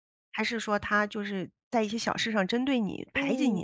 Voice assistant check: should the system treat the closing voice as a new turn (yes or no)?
yes